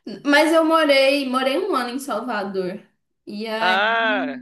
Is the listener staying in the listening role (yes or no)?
yes